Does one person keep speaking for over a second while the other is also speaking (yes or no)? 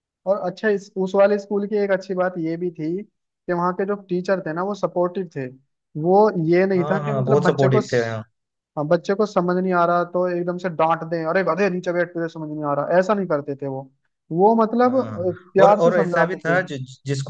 yes